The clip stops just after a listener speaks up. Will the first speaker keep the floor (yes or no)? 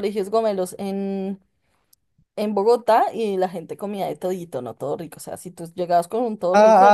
no